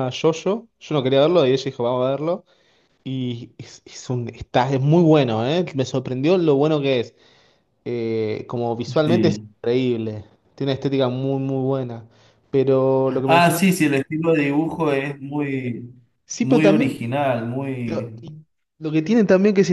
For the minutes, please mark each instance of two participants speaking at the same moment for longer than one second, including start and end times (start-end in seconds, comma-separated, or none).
none